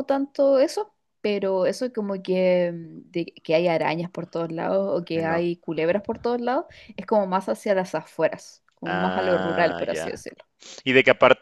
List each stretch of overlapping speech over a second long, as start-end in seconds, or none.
8.8-10.2